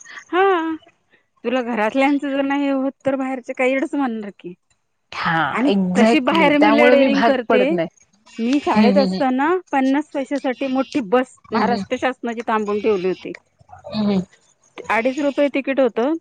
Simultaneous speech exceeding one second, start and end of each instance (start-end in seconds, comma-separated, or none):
5.5-7.8